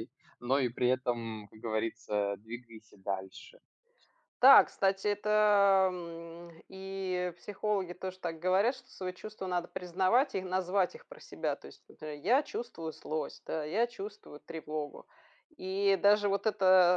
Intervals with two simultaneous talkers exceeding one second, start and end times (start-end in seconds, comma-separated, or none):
none